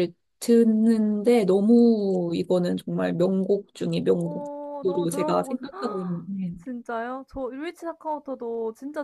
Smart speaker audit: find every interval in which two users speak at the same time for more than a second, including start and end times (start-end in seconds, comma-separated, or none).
4.1-5.6